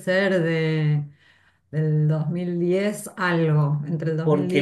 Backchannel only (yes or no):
no